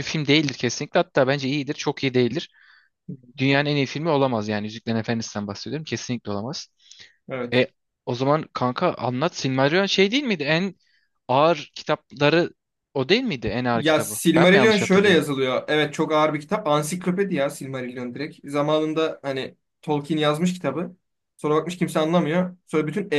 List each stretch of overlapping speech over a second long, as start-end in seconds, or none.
13.7-15.2